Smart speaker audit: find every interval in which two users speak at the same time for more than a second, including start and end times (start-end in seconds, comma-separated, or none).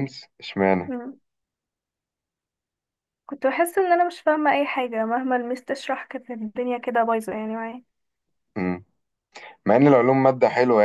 none